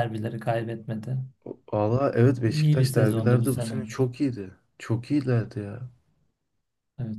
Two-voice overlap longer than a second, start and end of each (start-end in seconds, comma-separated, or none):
2.4-3.8